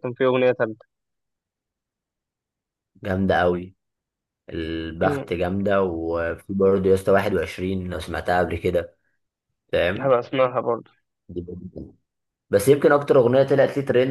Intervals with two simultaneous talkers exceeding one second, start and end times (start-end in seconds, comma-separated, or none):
none